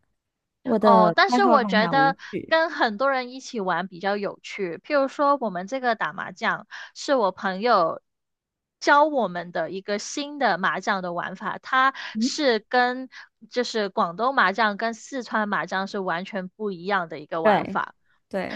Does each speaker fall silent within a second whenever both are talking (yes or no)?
no